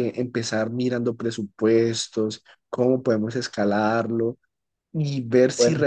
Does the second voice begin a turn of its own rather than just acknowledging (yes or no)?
no